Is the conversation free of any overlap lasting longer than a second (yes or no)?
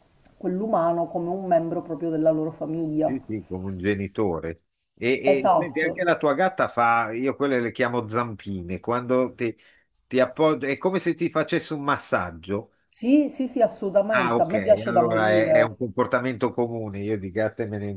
no